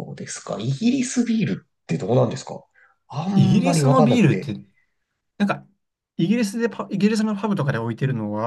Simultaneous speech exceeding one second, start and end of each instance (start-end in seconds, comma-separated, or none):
3.3-4.5